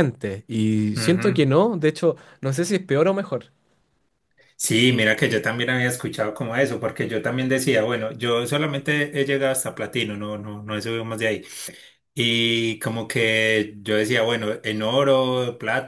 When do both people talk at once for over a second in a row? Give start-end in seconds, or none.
none